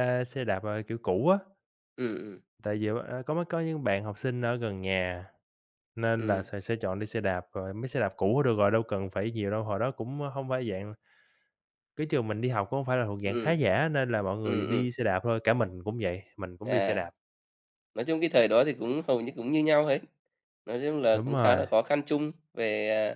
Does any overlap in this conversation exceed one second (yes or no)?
no